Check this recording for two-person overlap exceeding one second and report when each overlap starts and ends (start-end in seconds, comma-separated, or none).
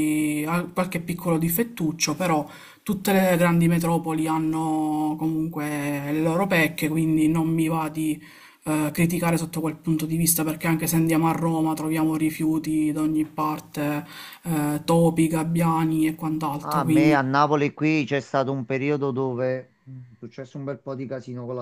none